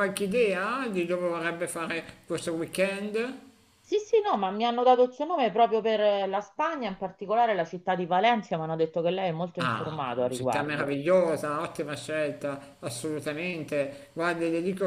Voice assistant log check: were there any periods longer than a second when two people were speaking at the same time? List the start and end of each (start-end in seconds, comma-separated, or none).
9.6-10.9